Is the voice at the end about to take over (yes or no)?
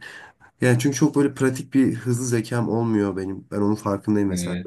no